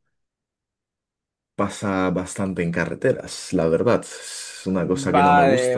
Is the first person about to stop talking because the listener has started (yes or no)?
yes